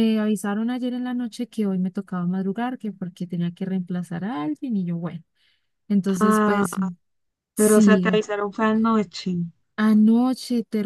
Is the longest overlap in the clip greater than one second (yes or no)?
no